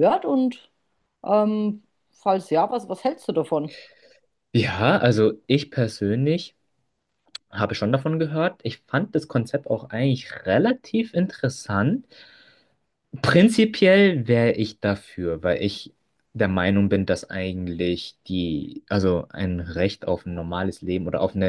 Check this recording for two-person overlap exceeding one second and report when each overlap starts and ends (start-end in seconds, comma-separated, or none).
none